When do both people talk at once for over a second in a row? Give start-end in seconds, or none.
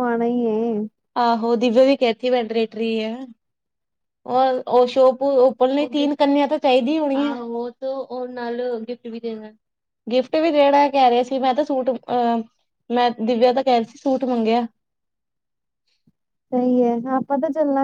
none